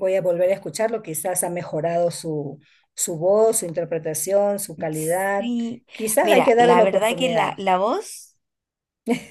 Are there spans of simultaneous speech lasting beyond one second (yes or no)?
yes